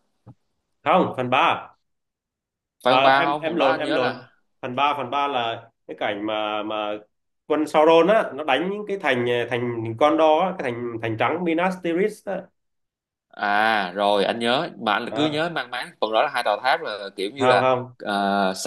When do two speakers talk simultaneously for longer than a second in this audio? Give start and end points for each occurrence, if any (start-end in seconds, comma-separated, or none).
2.8-4.1